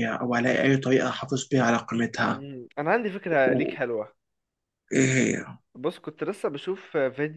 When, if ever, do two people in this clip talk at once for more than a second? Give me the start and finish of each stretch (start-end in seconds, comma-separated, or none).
none